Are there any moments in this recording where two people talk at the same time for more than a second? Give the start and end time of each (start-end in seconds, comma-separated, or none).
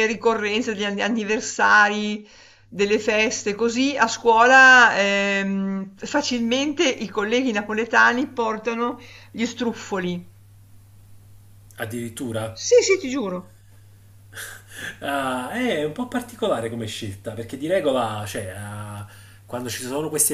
none